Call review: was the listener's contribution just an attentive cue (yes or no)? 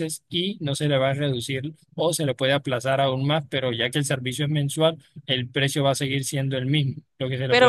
no